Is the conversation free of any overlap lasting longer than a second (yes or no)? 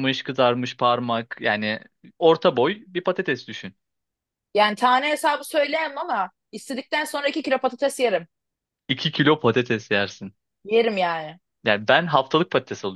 yes